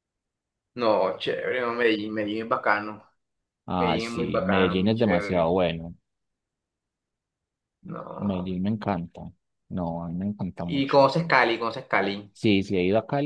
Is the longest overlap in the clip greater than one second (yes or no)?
yes